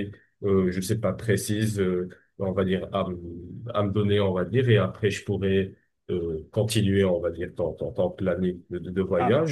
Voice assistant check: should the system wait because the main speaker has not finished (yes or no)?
yes